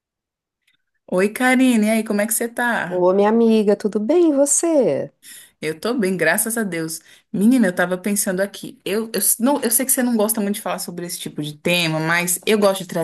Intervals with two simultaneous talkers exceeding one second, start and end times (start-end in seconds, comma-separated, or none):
none